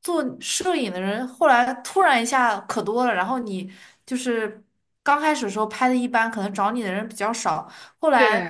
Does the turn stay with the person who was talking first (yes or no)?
yes